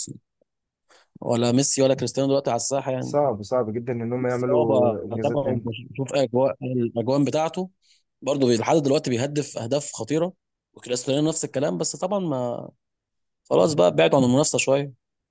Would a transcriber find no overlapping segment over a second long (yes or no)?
no